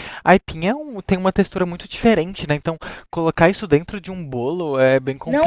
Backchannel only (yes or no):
no